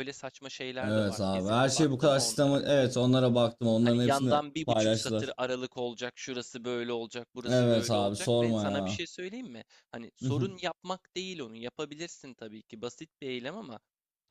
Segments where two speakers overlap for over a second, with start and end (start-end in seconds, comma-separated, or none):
0.8-2.6, 3.8-5.3, 7.5-9.0